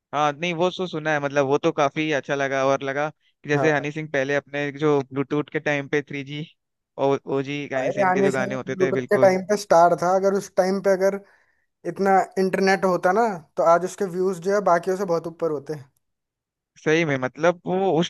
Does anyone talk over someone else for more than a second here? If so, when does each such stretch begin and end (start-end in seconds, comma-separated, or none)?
7.8-9.4